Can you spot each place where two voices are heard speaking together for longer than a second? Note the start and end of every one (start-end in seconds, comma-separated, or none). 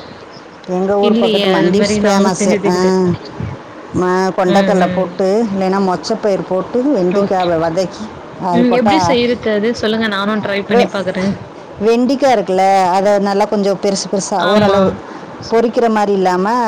1.1-3.0